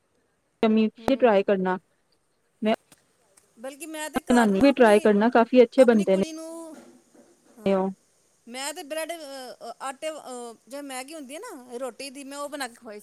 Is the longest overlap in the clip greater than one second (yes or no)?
yes